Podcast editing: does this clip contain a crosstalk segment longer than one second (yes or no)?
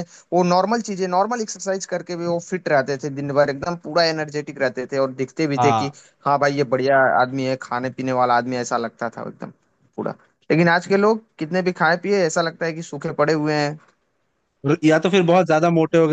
no